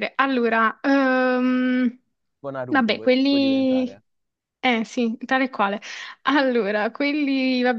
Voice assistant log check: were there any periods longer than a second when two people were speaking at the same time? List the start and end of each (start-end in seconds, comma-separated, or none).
2.7-4.0